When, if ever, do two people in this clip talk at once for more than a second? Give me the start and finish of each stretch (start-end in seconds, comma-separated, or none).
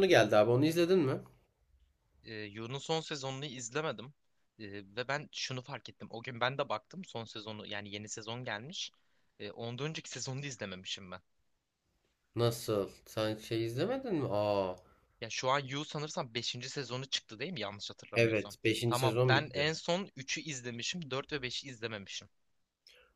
18.1-19.7